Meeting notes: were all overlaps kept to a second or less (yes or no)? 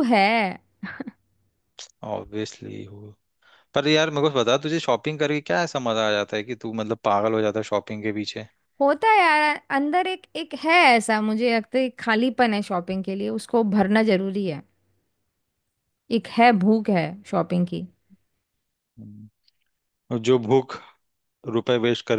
yes